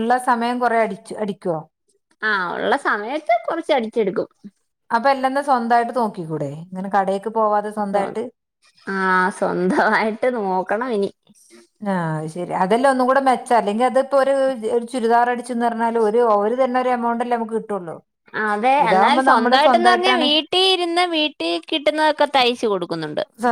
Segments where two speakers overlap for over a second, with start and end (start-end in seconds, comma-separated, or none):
18.8-20.2